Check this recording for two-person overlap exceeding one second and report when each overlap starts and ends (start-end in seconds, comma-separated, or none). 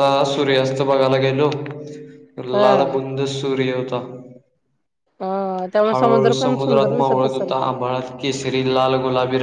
5.9-7.5